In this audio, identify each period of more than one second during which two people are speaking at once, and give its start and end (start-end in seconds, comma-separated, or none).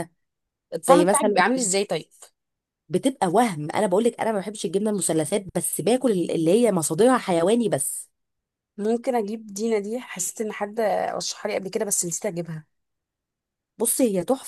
none